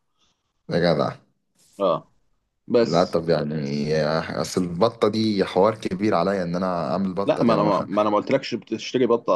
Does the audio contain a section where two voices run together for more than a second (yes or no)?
no